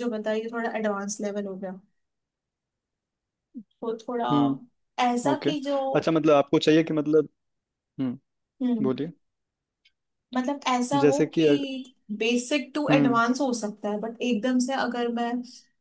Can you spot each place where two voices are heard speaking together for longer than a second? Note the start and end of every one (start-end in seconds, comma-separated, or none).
none